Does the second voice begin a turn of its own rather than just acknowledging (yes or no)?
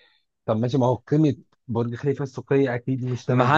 yes